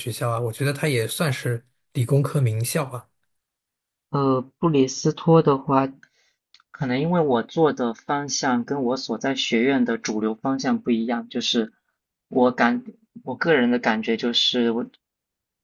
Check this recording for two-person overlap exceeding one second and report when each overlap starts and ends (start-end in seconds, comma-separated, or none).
none